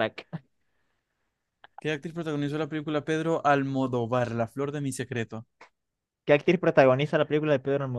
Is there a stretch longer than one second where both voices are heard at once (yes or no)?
no